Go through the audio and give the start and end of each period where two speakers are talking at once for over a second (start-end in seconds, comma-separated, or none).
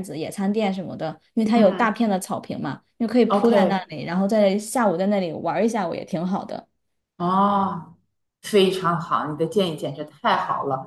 none